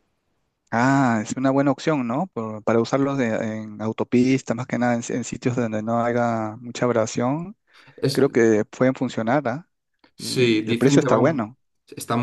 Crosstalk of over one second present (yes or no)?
yes